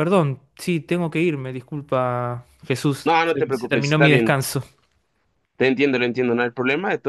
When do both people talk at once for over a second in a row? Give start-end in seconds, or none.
3.1-4.4